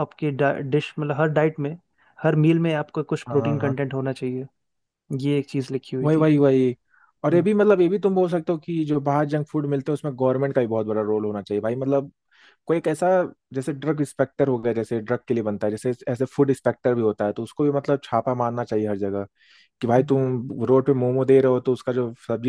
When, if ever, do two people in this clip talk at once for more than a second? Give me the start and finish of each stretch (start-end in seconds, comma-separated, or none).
none